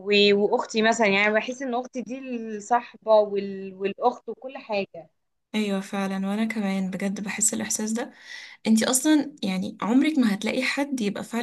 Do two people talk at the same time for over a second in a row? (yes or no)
no